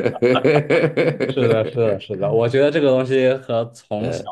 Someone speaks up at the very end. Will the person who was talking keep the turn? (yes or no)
yes